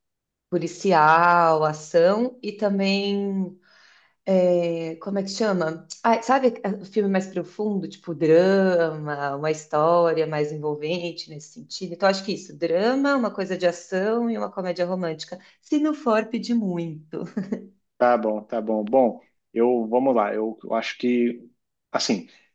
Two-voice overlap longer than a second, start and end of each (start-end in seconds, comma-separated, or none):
none